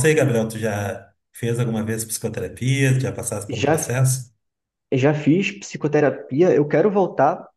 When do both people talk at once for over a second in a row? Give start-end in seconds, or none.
none